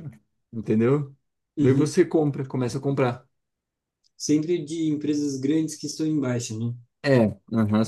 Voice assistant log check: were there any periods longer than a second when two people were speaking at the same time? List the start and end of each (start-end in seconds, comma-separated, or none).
none